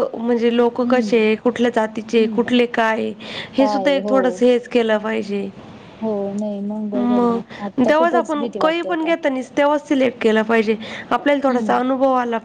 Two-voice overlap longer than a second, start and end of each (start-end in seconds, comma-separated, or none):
6.9-9.1